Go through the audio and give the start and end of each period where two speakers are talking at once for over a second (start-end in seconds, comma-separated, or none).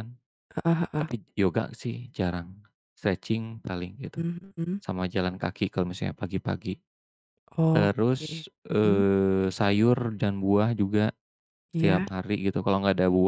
7.8-9.0